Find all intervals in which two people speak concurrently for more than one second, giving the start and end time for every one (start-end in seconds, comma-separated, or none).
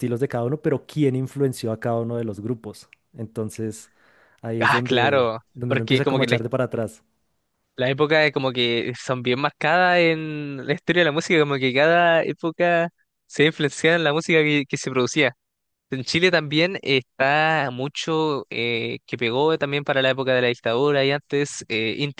4.6-6.4